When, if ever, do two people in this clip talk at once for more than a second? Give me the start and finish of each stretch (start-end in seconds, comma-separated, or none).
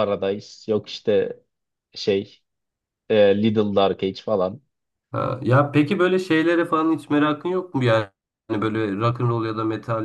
none